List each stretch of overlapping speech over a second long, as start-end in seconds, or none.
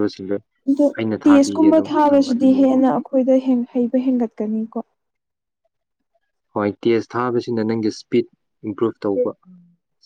1.3-2.8